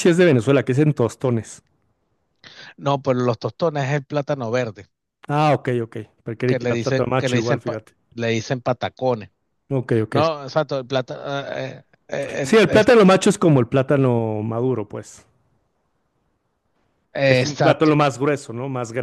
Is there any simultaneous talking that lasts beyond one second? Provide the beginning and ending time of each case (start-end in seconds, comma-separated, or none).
6.5-7.9